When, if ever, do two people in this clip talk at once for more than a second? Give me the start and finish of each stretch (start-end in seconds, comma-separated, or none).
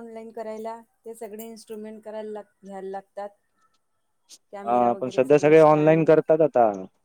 4.6-6.1